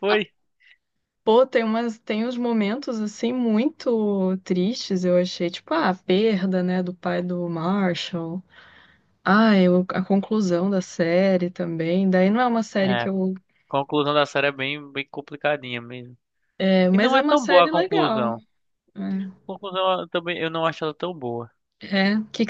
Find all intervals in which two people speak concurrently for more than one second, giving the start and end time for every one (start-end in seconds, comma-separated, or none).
16.9-18.3